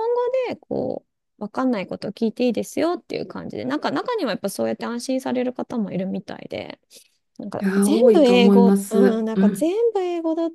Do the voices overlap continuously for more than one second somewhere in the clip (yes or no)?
yes